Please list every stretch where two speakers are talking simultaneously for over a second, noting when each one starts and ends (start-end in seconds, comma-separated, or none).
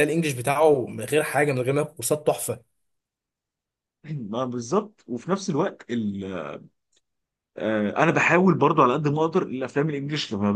none